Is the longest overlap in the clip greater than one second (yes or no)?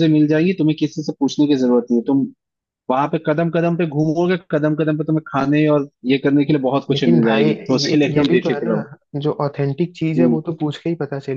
yes